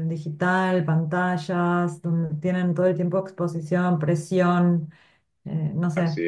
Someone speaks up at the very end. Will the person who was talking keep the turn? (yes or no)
yes